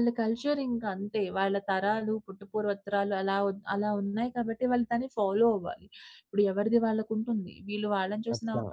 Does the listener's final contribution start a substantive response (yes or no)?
no